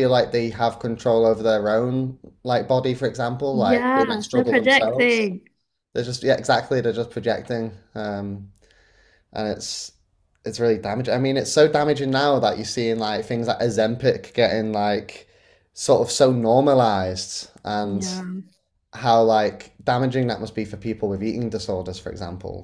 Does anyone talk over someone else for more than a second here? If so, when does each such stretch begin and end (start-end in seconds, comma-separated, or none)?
3.5-5.3